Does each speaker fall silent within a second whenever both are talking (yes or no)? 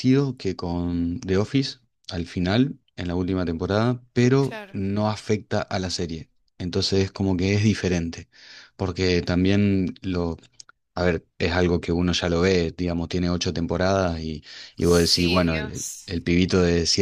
no